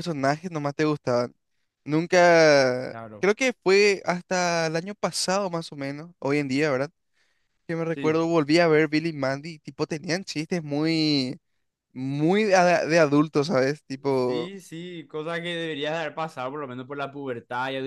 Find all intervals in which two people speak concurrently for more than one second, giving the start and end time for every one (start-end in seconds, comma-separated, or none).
none